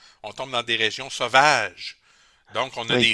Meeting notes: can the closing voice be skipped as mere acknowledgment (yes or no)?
yes